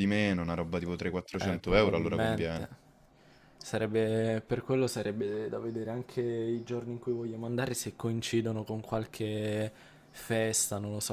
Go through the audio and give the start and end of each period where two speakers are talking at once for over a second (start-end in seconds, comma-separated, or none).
1.4-2.7